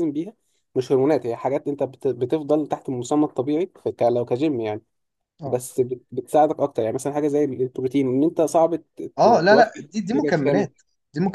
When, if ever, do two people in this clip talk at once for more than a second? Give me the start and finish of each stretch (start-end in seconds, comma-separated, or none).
9.2-10.7